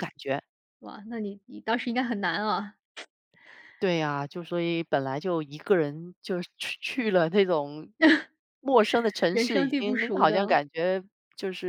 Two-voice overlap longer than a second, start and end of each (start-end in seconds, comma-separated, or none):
9.3-10.6